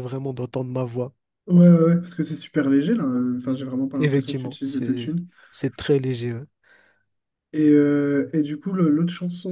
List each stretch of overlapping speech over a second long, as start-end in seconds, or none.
4.0-5.3